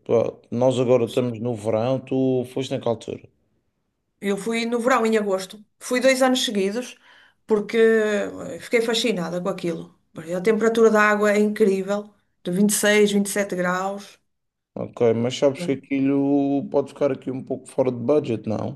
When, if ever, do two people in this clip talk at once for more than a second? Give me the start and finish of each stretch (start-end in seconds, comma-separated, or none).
none